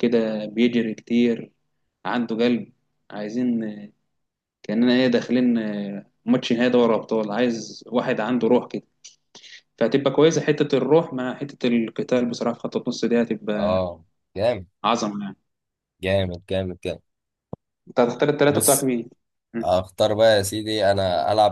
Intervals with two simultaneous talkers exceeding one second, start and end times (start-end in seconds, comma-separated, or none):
none